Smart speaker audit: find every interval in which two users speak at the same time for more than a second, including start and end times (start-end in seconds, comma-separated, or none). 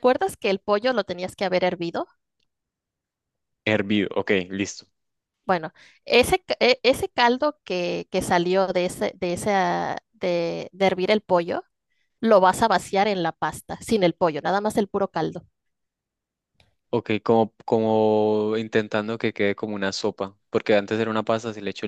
none